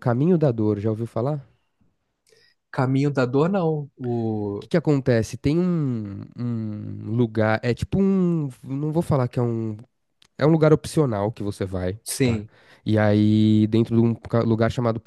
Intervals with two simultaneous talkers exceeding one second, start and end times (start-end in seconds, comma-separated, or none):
none